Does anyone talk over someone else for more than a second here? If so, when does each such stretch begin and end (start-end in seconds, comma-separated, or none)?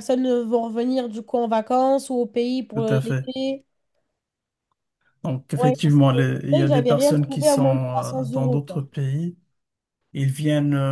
5.6-8.8